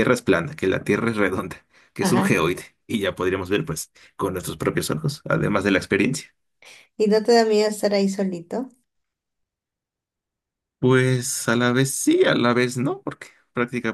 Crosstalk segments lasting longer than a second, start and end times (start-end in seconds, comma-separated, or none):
none